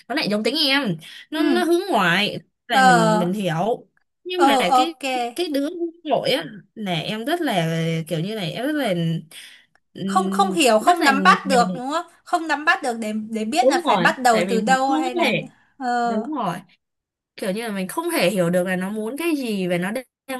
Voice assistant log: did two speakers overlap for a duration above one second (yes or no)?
yes